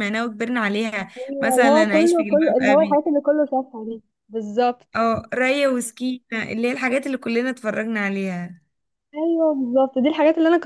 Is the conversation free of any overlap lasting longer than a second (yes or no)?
no